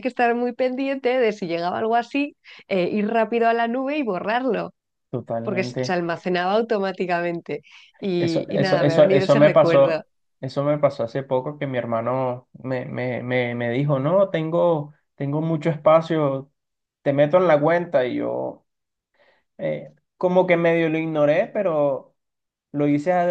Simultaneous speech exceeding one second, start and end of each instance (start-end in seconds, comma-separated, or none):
8.2-10.0